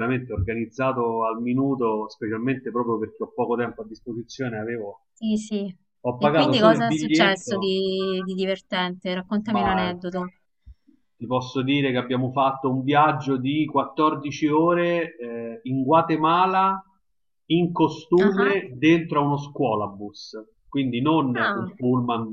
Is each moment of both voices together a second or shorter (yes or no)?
no